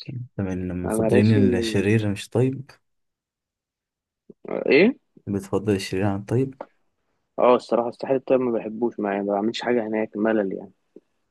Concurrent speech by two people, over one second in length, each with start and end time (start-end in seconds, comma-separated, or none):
none